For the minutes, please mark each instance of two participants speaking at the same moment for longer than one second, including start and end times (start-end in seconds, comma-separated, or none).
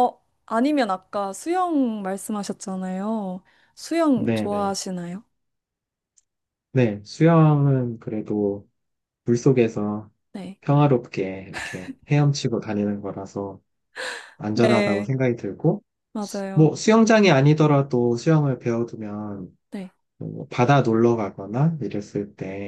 none